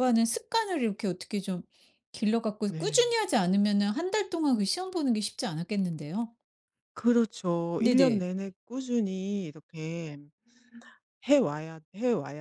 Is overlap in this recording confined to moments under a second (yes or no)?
yes